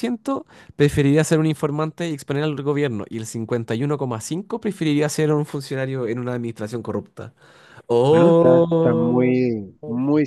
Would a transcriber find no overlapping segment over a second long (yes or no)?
no